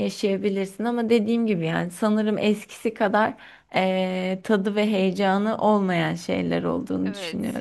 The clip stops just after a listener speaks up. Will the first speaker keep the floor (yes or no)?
no